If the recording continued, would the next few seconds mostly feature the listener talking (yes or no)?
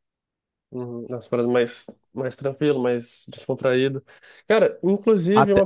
no